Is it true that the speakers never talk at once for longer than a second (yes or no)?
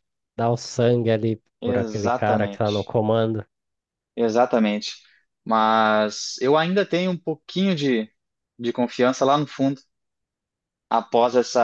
no